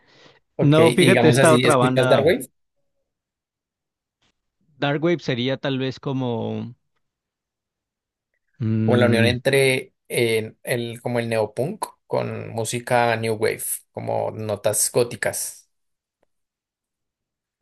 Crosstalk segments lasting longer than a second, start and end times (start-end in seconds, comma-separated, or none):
0.6-2.2